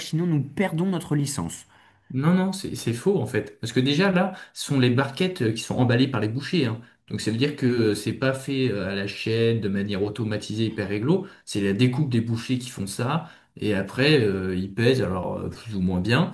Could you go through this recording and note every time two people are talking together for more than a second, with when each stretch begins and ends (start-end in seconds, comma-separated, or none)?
none